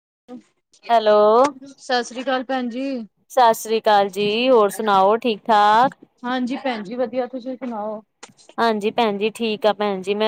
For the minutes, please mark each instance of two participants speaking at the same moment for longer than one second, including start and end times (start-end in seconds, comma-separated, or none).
none